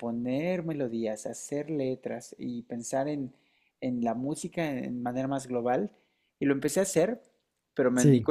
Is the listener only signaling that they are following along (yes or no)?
yes